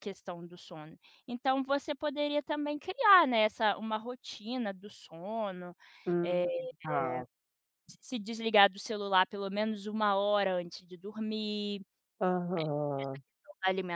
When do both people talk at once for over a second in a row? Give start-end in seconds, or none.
none